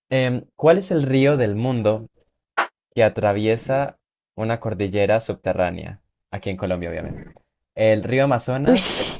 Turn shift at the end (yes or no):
no